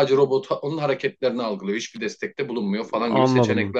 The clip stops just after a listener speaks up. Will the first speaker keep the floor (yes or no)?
no